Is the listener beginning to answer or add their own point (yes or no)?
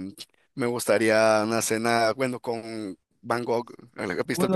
yes